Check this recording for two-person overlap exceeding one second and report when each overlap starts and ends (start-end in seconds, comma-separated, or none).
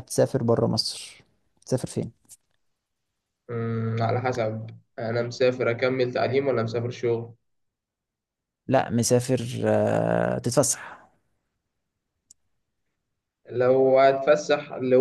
none